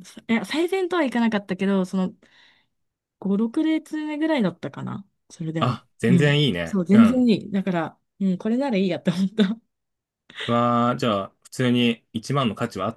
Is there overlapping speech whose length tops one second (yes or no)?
yes